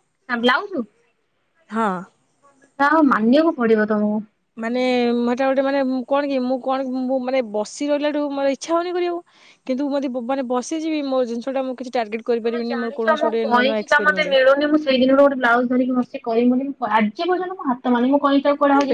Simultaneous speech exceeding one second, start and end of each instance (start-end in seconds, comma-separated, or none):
12.4-14.3